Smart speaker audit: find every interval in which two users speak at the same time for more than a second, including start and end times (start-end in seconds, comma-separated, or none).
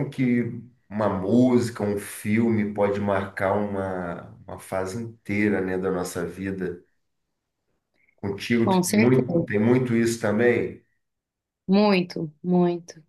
none